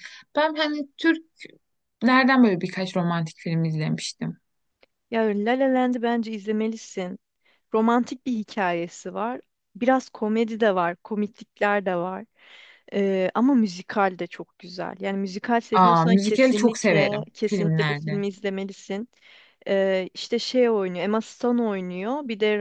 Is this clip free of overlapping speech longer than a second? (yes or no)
no